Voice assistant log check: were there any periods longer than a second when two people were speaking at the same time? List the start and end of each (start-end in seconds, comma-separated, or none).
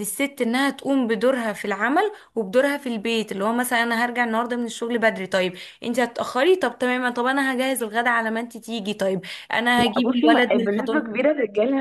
9.8-11.2